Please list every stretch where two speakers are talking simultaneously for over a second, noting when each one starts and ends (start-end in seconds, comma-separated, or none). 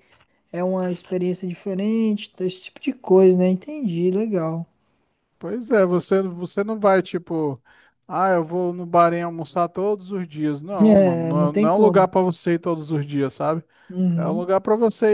10.8-12.1